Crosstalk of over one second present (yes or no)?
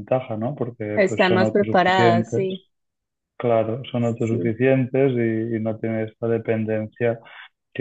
yes